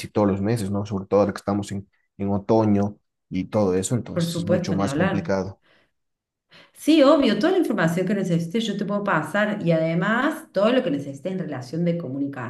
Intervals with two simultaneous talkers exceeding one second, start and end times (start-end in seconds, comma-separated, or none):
4.1-5.3